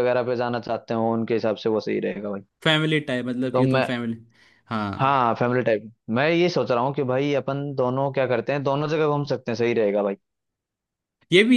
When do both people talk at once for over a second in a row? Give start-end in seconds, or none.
none